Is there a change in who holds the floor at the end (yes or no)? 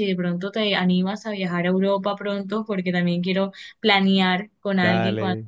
no